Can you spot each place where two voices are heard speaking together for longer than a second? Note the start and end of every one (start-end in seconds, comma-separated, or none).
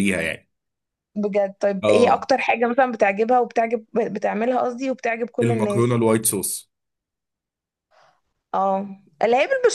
none